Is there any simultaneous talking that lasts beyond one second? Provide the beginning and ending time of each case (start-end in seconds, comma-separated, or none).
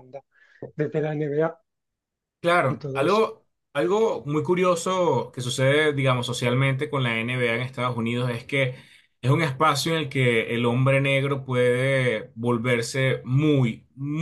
none